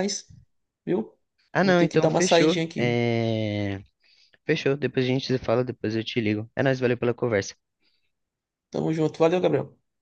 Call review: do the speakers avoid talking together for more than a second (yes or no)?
no